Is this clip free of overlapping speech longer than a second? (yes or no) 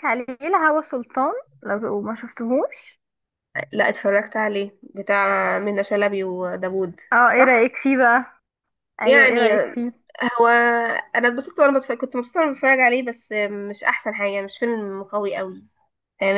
yes